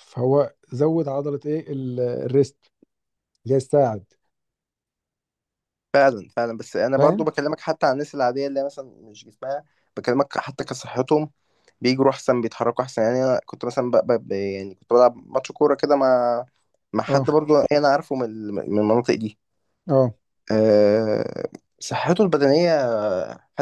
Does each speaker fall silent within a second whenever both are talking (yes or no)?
yes